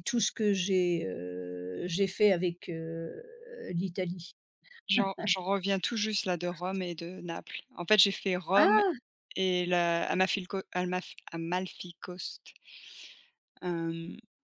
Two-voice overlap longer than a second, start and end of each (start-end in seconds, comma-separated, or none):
none